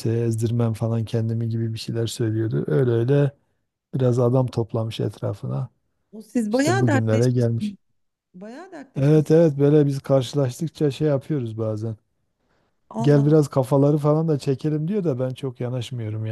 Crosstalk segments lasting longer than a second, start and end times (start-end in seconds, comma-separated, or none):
6.5-7.8